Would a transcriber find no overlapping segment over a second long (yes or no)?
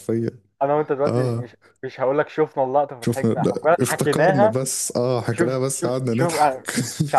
no